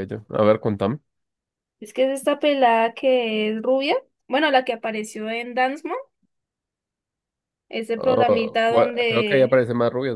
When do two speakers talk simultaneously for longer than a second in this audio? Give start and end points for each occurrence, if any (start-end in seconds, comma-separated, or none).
8.0-9.7